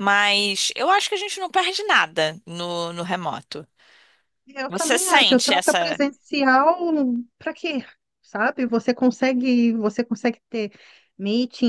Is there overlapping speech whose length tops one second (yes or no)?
yes